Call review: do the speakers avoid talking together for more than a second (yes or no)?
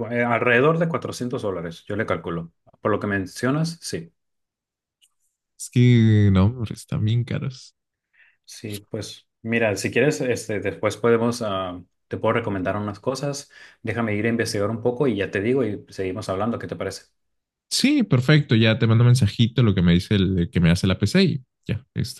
yes